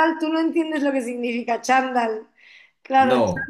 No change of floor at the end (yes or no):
yes